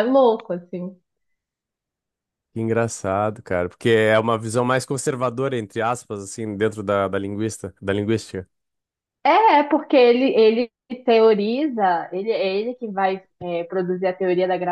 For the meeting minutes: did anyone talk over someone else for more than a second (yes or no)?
no